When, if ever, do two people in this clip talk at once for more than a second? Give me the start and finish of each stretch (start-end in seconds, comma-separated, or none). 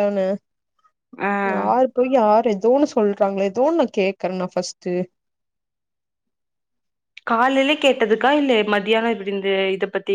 none